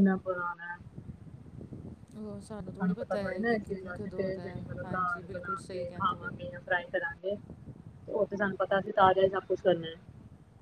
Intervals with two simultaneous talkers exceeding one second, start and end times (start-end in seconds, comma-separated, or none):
4.8-6.3